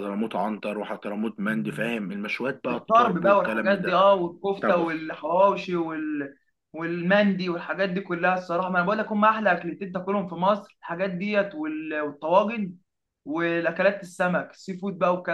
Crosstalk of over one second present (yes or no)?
yes